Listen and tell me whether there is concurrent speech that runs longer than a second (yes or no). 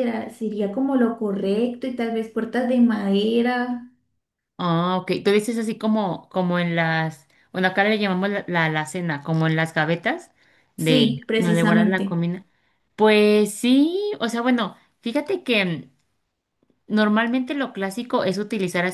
yes